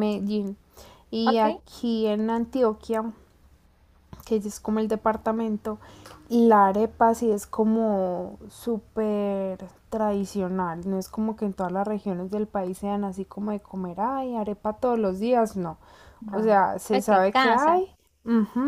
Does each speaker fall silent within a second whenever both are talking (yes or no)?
no